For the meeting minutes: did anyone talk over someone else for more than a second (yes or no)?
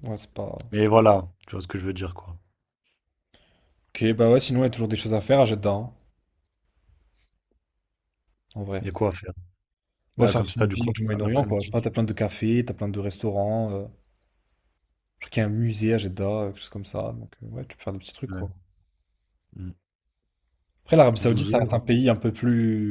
yes